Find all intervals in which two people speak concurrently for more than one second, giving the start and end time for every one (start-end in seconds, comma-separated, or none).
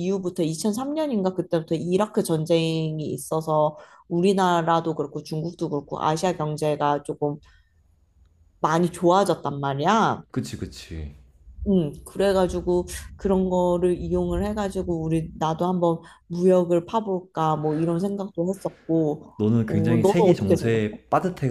19.4-20.8